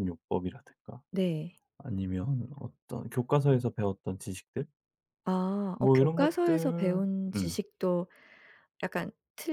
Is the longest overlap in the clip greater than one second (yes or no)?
yes